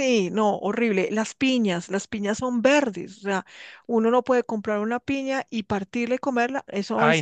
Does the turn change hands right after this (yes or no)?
yes